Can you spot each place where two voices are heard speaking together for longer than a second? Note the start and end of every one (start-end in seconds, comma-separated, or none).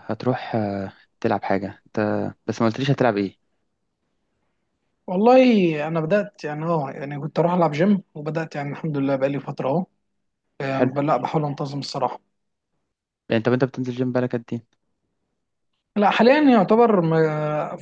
none